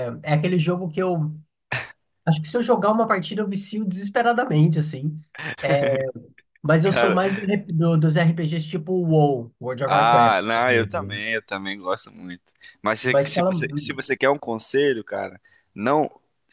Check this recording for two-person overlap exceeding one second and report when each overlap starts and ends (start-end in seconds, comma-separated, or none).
9.8-11.2